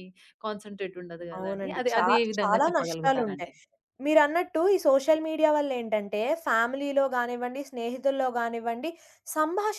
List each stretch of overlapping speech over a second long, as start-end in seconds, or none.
1.4-3.5